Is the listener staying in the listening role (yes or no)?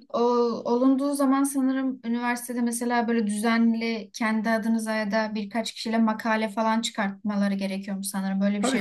no